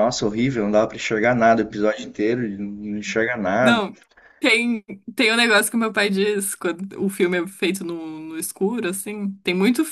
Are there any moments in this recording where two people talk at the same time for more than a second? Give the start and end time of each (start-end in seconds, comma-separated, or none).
none